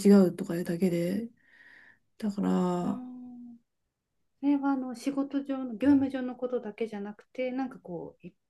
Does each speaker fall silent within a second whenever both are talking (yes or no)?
yes